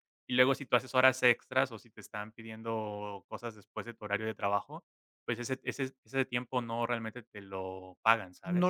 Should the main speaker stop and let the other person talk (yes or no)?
yes